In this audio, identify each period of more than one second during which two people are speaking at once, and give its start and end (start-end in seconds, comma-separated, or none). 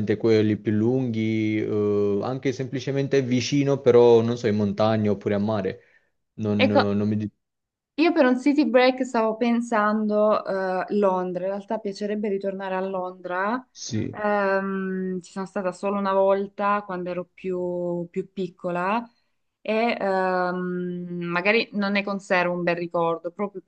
none